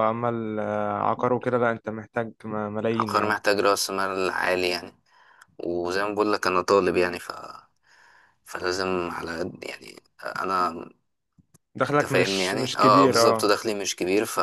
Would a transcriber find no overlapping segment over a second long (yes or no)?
no